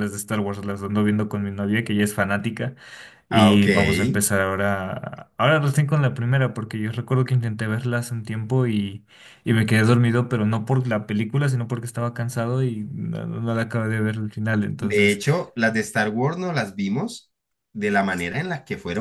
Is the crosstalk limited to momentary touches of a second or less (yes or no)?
yes